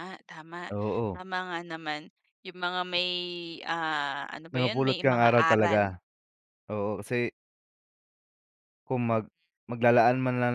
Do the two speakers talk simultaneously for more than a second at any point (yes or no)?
yes